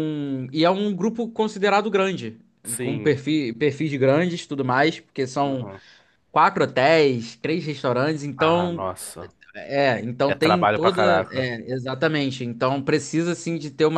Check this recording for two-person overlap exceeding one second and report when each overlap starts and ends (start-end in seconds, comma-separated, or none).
10.3-11.5